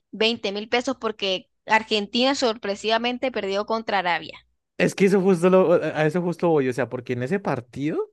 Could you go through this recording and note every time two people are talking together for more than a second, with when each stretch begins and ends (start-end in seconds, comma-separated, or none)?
none